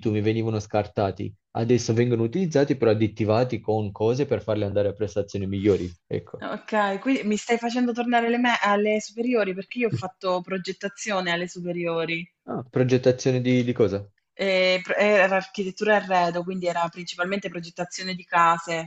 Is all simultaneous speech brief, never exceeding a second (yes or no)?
yes